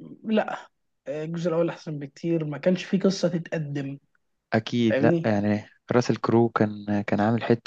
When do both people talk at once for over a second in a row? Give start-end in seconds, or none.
none